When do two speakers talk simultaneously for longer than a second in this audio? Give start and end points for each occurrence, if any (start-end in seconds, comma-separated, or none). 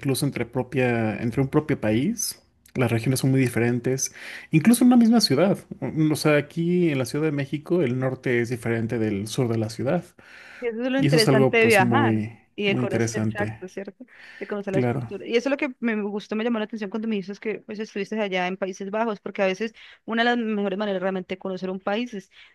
11.0-13.6